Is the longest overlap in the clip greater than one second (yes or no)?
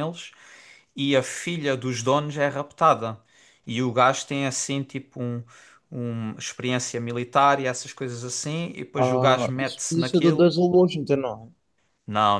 yes